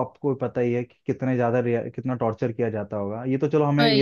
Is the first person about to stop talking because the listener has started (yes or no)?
no